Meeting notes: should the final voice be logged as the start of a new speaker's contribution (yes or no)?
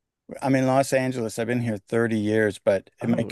no